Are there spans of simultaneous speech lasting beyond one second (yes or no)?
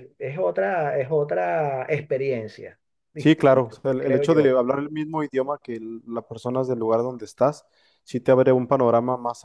yes